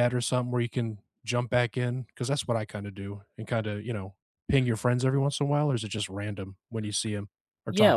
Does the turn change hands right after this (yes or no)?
yes